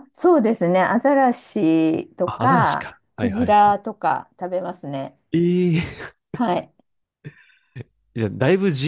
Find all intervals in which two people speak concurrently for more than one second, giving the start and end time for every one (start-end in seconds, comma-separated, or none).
2.2-3.8